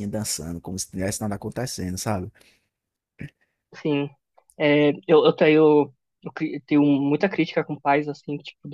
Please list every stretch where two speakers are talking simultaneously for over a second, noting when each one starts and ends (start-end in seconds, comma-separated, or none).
none